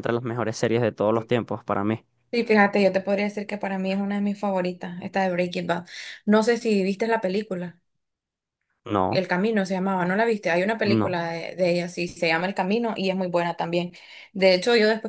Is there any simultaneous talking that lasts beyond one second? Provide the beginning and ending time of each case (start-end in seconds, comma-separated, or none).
none